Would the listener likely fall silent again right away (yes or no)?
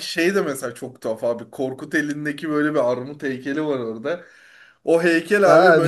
yes